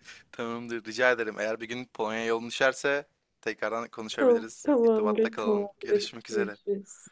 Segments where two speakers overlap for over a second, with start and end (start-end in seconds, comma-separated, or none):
4.1-6.6